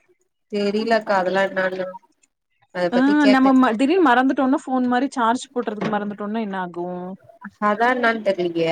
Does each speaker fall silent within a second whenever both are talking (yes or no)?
yes